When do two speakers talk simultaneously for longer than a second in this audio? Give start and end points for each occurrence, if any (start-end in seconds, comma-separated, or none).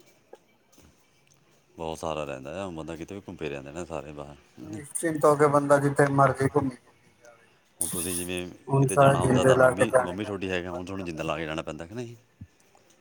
8.9-11.4